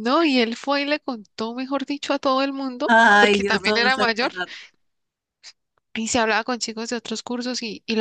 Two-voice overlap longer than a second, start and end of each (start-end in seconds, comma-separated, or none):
2.9-4.3